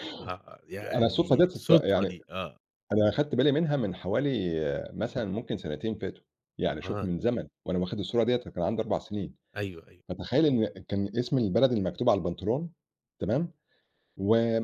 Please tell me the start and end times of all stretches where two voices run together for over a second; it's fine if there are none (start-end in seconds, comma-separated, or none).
0.9-2.2